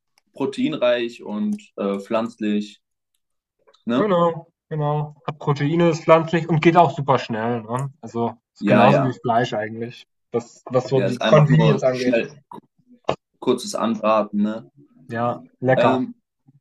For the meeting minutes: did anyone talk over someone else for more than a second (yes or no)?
yes